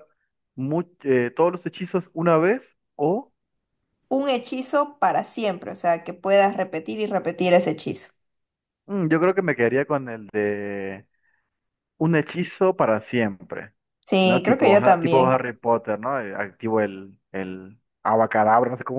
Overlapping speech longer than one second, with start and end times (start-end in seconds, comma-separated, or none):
14.2-15.4